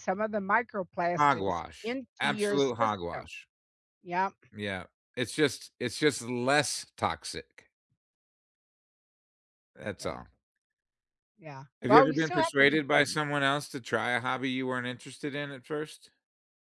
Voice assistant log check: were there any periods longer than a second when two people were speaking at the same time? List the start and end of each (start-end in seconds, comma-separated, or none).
1.2-3.3, 11.8-13.1